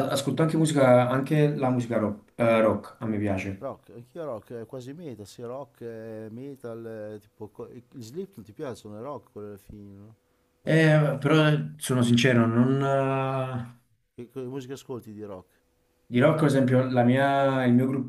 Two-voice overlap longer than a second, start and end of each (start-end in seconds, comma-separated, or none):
none